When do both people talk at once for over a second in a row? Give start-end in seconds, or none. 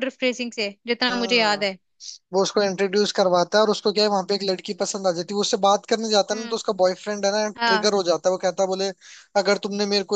none